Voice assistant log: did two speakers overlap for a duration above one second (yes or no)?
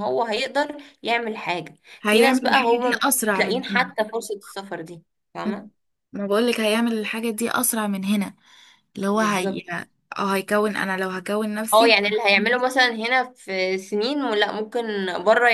yes